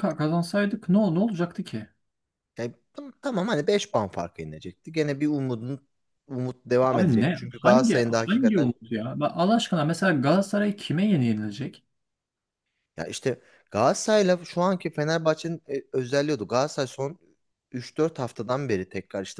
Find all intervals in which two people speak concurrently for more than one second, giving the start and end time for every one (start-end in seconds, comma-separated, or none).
6.8-8.7